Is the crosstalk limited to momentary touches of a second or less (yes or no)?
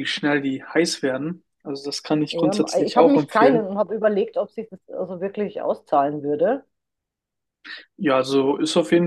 no